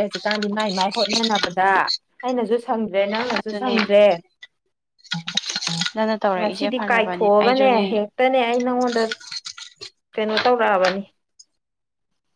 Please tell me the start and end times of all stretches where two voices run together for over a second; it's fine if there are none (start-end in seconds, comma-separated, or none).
6.3-8.0